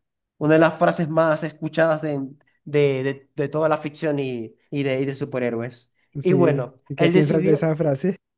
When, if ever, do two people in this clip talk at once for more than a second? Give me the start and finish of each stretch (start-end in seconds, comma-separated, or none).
6.2-7.7